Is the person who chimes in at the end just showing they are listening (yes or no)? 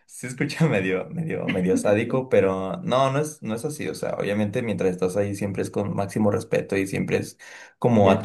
yes